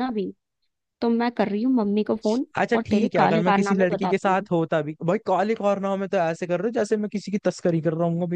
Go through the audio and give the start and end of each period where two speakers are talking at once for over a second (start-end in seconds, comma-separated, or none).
2.6-4.5